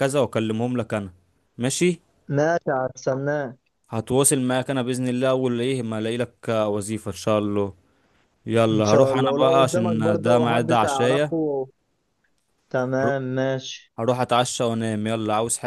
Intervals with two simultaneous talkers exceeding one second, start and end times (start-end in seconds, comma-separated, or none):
8.7-11.3